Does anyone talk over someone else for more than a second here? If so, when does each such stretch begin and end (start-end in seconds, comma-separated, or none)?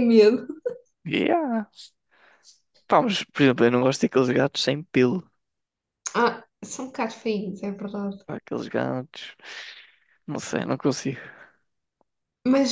none